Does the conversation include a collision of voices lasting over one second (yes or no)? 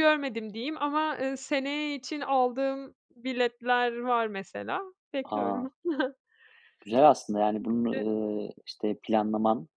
no